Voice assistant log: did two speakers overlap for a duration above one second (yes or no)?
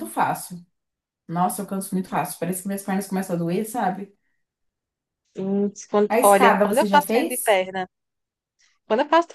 yes